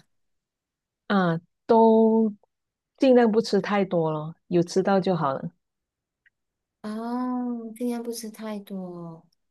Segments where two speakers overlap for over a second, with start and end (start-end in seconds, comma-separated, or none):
none